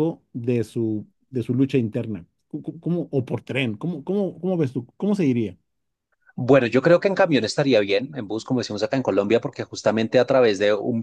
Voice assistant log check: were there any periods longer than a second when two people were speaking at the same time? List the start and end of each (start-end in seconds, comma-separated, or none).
none